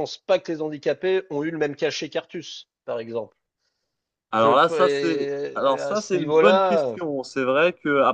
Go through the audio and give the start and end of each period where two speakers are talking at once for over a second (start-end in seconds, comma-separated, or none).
4.3-7.0